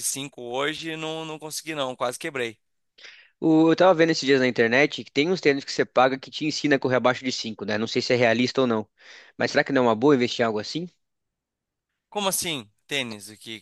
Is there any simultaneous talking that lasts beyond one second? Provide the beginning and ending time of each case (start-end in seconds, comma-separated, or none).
none